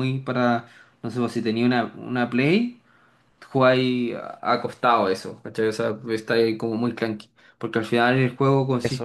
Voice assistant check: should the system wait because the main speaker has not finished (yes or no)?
yes